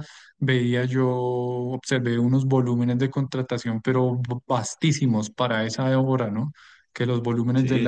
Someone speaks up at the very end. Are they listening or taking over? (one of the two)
listening